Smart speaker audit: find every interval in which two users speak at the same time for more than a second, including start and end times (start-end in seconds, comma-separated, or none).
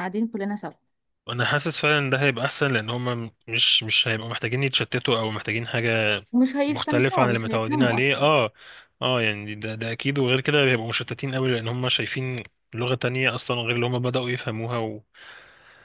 6.7-8.3